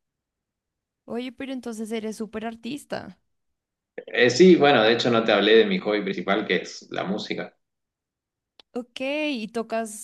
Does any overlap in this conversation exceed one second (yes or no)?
no